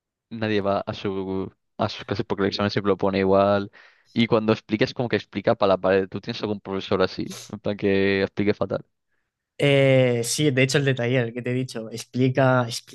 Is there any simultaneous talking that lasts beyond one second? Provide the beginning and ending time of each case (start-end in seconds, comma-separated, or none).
none